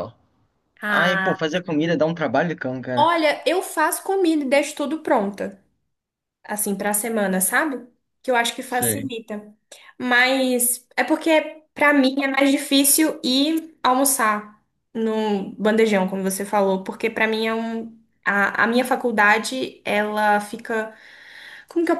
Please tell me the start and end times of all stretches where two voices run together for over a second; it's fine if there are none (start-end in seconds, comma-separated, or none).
none